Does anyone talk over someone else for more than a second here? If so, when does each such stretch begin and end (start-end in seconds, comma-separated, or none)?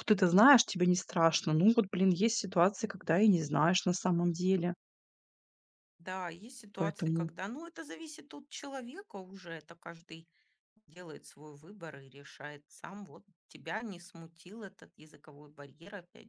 none